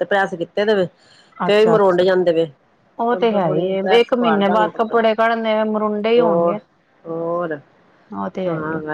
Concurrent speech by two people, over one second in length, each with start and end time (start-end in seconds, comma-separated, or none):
3.1-4.7